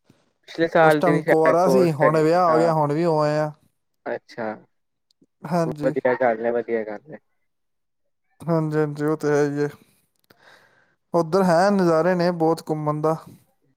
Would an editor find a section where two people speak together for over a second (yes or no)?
yes